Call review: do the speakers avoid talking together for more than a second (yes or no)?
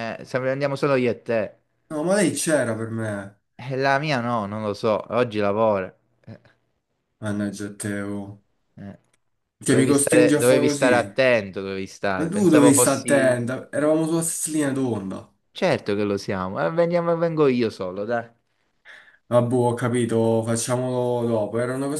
no